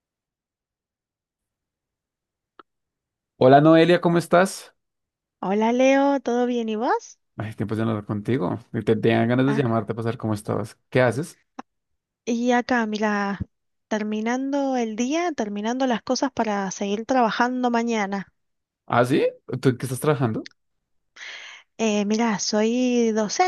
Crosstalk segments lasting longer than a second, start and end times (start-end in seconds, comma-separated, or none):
none